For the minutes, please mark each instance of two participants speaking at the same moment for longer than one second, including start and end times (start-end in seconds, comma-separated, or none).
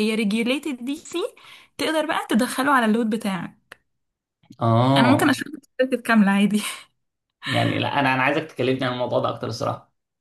none